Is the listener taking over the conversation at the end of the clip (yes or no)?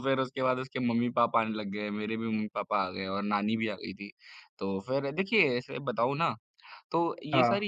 no